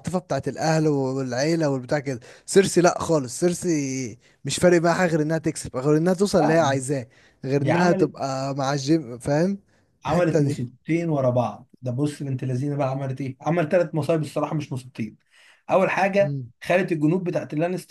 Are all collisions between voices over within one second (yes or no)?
yes